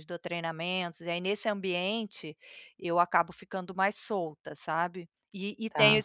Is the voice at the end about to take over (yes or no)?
no